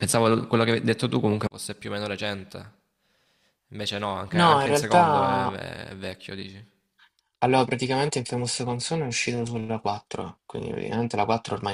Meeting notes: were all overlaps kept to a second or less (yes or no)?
no